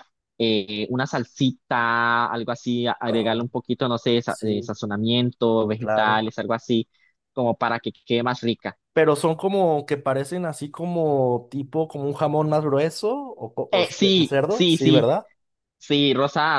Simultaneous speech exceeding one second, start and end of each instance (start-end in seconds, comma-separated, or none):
13.7-15.1